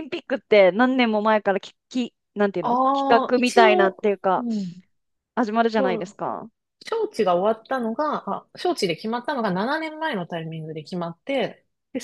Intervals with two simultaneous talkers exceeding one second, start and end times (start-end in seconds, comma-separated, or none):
2.6-4.5